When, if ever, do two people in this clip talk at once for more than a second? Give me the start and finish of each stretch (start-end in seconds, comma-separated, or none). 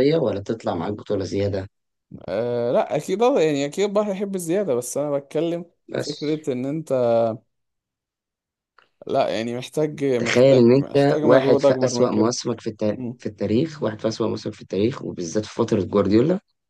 10.2-12.3